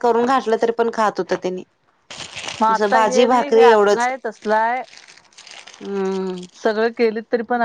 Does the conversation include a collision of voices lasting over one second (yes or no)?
yes